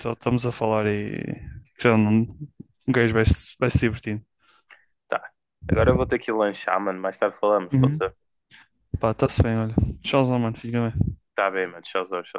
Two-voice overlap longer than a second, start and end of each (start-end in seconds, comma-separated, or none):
none